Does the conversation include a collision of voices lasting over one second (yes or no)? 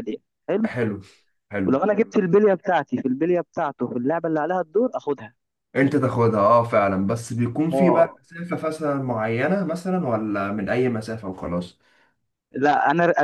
no